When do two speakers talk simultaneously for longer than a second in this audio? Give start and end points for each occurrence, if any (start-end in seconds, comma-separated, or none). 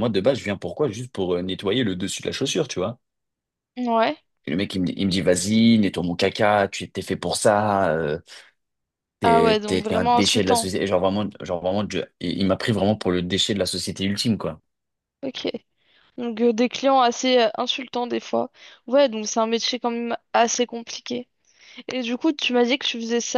9.2-10.7